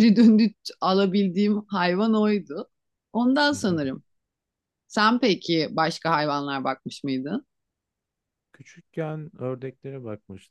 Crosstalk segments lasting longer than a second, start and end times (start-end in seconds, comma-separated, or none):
none